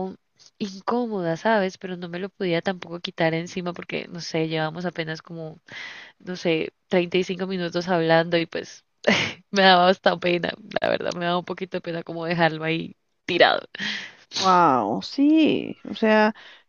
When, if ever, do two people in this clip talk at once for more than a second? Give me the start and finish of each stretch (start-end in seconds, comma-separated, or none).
none